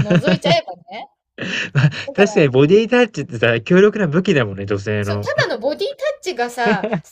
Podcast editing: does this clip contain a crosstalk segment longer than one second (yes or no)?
no